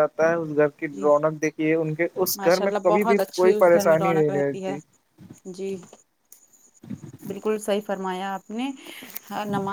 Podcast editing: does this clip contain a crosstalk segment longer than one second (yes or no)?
yes